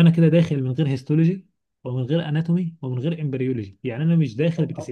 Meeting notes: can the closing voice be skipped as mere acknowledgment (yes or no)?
no